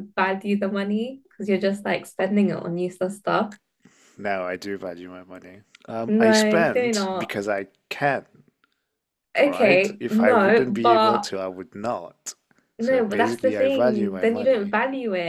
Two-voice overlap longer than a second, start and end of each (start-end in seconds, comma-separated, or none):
6.1-7.3, 9.4-11.3, 12.8-14.7